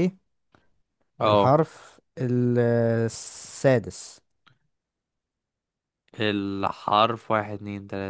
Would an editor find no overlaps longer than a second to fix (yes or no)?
yes